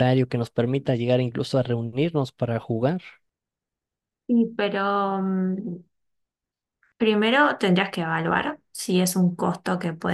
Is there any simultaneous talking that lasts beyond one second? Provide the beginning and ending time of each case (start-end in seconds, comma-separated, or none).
none